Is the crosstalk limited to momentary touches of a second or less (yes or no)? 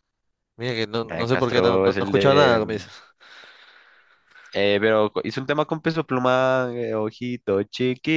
no